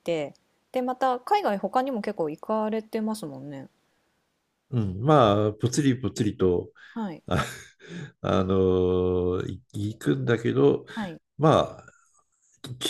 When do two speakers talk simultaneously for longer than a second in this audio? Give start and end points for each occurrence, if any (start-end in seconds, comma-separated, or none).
none